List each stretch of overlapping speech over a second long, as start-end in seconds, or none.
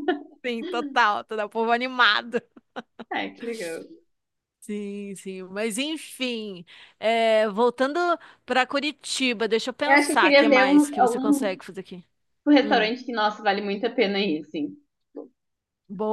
9.8-11.6